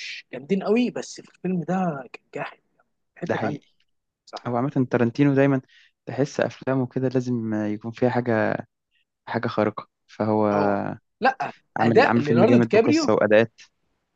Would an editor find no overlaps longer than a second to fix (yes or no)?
no